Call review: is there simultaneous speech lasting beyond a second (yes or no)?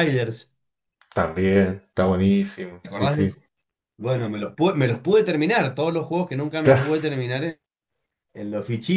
no